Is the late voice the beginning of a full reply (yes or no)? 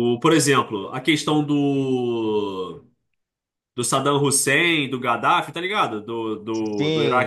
yes